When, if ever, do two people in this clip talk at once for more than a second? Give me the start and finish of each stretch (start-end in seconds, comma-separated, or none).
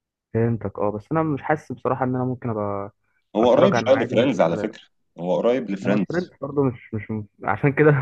3.4-4.8